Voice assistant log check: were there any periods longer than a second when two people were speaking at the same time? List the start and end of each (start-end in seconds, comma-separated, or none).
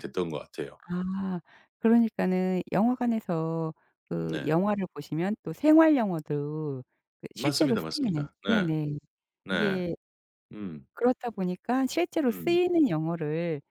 7.3-8.7